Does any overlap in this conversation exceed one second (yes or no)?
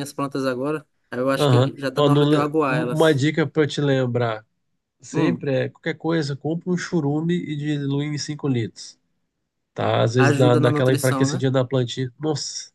yes